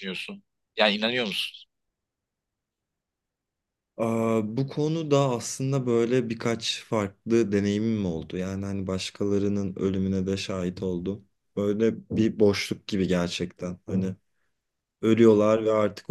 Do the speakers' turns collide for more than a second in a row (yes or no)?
no